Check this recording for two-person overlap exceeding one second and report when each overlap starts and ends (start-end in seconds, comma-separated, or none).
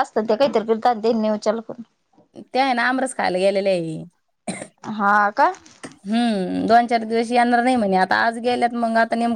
none